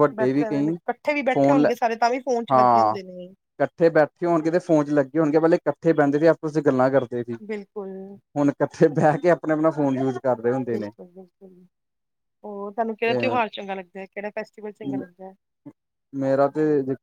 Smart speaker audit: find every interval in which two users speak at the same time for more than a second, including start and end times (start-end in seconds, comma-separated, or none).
none